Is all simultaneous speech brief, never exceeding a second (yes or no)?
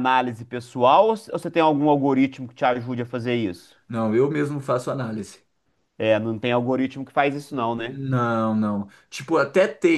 yes